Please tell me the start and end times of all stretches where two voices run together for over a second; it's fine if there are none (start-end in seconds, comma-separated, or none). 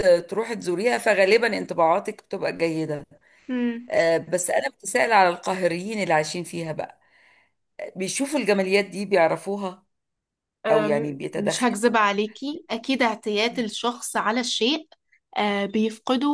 none